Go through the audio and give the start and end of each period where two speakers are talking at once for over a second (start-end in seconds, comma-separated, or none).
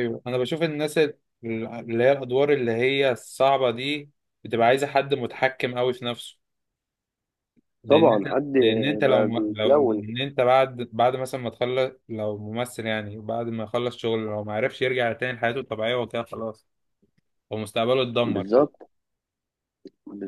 7.9-10.1